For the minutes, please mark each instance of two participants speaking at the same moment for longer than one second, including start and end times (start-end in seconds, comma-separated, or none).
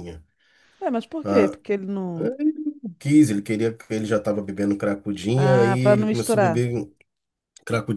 5.4-6.7